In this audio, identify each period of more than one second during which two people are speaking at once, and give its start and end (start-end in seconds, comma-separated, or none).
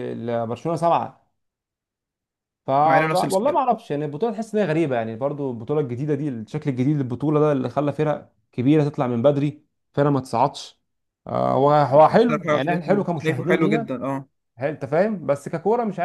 12.3-14.0